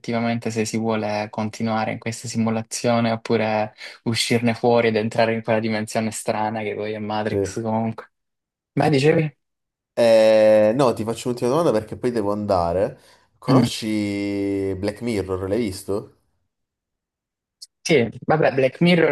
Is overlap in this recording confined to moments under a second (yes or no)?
yes